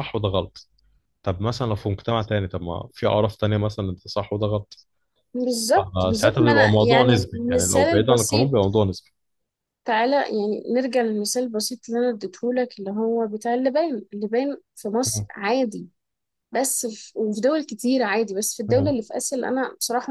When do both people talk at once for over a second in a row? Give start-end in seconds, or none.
5.8-8.5